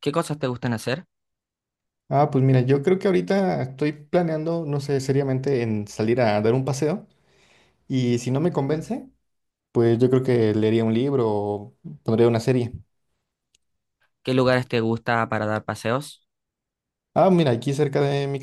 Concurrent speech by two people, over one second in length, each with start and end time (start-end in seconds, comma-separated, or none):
none